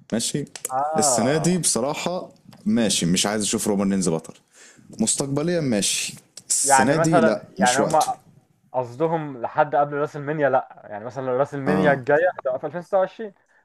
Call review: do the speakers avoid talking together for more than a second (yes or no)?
no